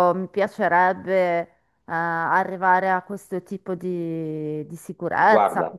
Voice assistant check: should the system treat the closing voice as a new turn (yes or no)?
no